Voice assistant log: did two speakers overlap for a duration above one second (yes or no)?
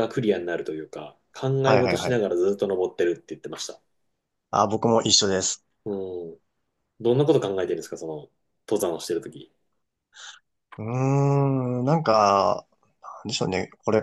no